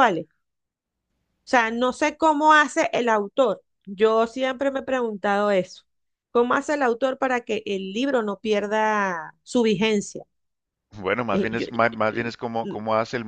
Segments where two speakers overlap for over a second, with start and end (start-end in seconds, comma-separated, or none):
11.3-12.7